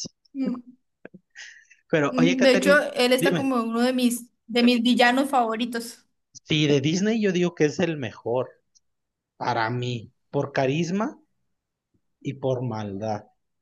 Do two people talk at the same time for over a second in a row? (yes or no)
yes